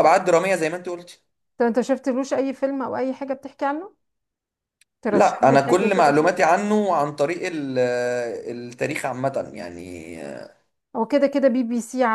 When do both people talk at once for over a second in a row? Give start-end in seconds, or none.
5.1-6.3